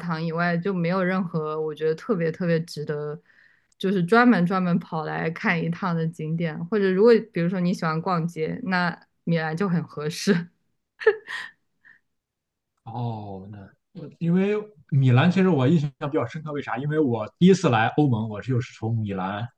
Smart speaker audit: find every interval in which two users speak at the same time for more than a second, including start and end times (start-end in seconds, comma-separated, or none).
none